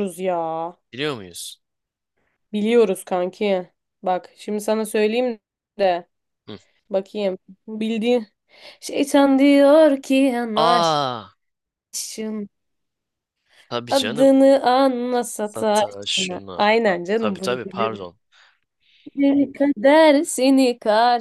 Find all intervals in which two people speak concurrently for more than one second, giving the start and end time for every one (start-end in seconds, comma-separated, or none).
15.4-18.1